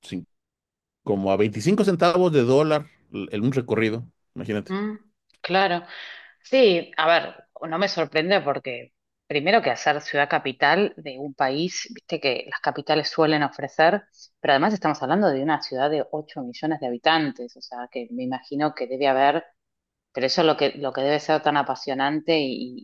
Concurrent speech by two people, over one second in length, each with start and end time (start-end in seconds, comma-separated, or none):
none